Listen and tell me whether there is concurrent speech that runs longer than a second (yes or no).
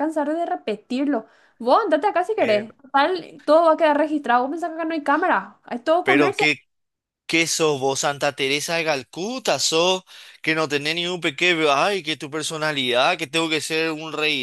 no